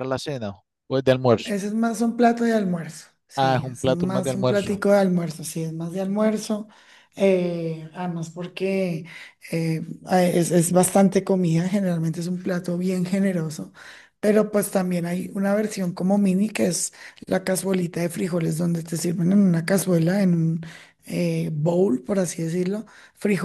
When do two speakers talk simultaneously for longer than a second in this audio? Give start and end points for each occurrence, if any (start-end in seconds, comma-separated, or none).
3.4-4.8